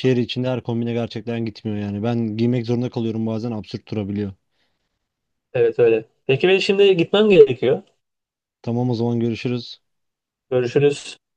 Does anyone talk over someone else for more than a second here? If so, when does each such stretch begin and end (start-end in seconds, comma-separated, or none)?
none